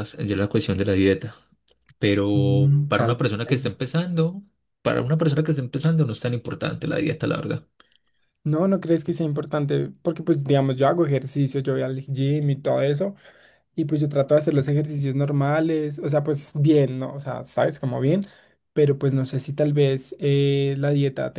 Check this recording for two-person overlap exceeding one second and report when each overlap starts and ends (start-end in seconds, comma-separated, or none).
2.3-3.7